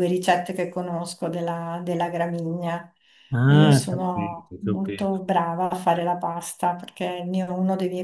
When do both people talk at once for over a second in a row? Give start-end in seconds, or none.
3.5-5.2